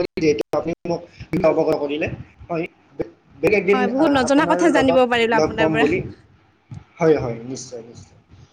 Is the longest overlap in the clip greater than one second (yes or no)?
yes